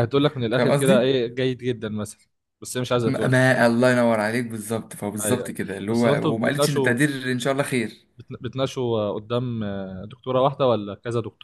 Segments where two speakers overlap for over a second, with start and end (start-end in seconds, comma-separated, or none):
5.2-7.0